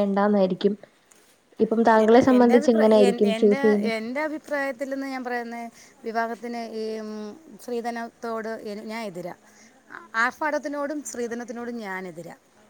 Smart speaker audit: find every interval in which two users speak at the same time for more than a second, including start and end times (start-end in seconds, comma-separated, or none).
none